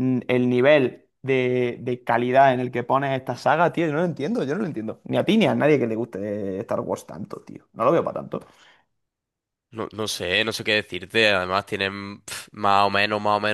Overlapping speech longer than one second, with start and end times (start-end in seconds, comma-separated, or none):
none